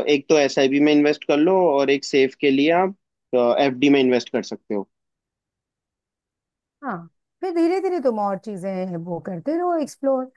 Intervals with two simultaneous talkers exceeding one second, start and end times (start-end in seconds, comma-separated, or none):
none